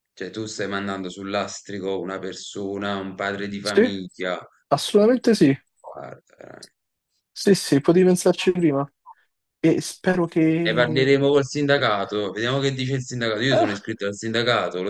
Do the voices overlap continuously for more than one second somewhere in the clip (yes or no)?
no